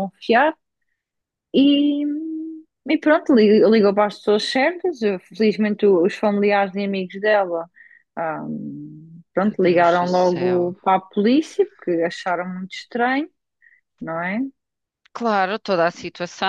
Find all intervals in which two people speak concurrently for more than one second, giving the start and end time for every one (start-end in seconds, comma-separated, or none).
9.5-10.8